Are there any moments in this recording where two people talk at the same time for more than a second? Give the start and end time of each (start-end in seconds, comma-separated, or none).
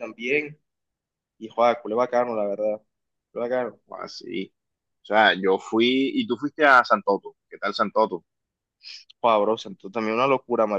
none